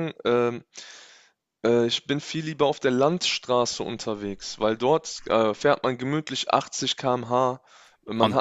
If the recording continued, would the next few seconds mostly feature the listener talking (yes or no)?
no